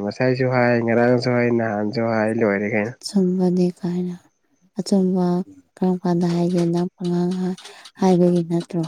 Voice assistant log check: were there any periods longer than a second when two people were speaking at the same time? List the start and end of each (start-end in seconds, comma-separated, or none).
none